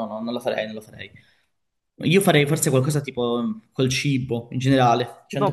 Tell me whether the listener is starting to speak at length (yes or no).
yes